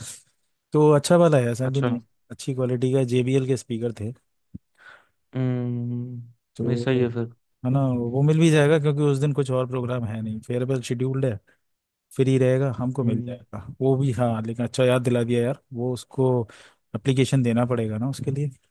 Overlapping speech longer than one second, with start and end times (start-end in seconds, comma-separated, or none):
none